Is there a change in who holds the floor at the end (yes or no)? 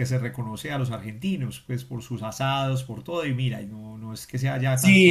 yes